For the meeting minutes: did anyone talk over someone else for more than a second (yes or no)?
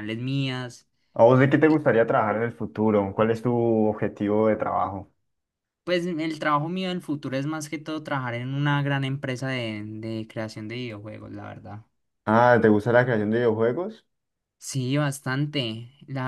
no